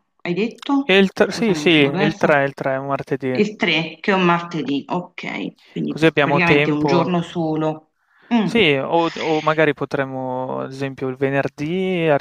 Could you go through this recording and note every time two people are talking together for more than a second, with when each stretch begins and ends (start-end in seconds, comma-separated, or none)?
0.8-2.4, 5.8-7.1